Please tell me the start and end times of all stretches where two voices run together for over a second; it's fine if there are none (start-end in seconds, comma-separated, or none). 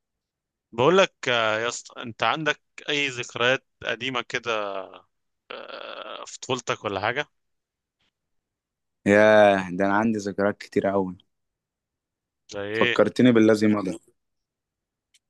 none